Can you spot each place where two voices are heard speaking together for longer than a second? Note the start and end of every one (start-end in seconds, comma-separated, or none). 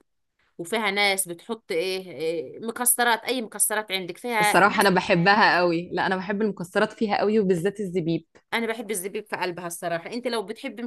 none